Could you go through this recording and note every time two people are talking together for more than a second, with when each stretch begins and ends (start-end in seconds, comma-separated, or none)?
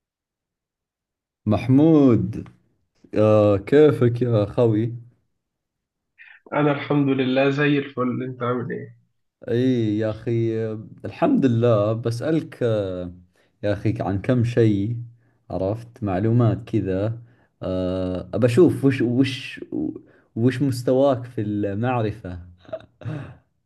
none